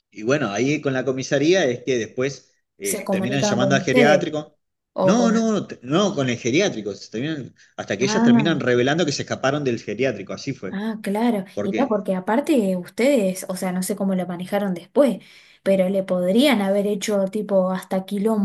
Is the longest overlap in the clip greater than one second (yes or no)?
yes